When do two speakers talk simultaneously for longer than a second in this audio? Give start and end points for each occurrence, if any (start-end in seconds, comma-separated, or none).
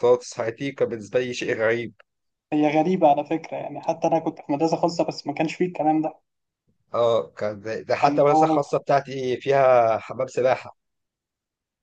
none